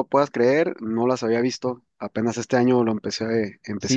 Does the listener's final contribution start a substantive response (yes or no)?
yes